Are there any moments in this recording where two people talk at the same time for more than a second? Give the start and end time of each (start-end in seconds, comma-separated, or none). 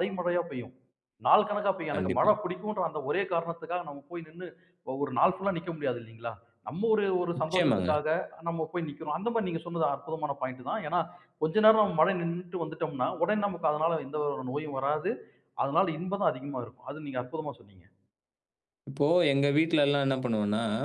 none